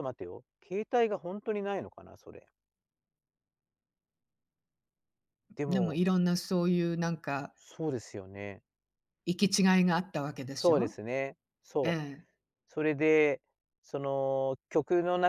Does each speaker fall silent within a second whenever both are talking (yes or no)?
yes